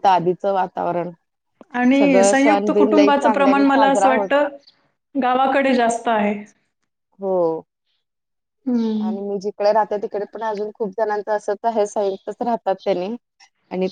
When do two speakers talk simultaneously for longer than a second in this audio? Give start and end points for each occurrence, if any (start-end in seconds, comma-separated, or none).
2.0-4.3